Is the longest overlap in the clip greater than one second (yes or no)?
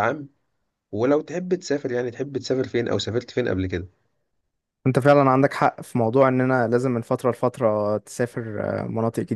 no